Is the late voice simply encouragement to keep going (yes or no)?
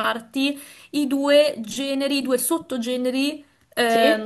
yes